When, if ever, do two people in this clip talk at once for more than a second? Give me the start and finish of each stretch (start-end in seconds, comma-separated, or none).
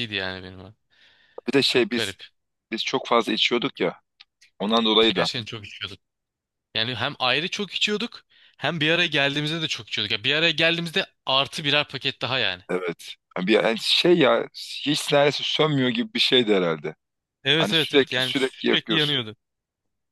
17.6-19.2